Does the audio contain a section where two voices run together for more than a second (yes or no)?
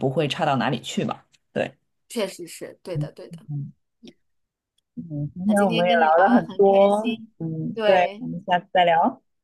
yes